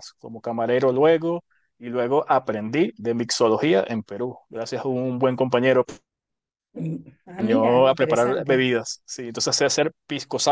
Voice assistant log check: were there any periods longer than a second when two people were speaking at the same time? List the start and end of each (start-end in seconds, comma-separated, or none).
7.4-8.7